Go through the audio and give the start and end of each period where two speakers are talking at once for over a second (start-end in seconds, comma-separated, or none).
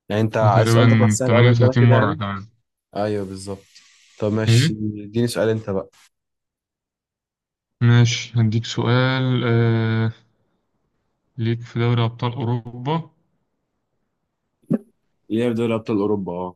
0.5-2.2